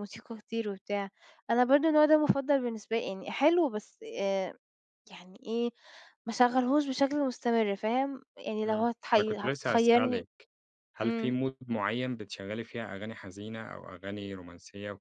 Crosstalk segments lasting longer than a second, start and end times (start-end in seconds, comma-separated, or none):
8.7-10.2